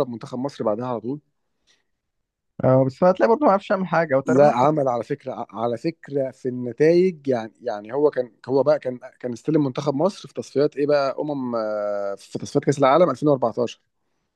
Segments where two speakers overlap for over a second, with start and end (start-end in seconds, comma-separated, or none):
none